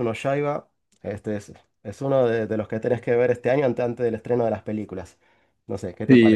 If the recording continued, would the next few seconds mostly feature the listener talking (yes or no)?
yes